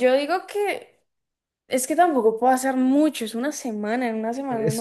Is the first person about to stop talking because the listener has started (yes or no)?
yes